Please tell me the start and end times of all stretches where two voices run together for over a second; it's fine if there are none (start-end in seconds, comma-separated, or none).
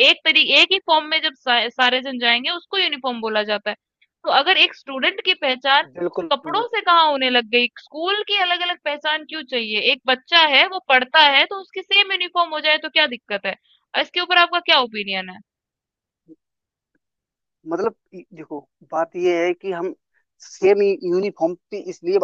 none